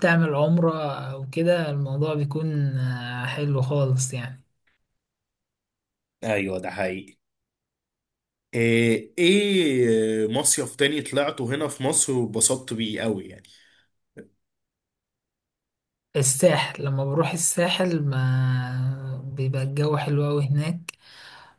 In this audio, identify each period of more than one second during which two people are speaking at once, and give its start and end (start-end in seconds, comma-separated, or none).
none